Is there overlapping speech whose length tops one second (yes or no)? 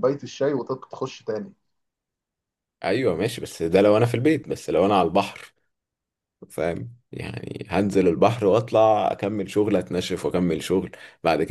no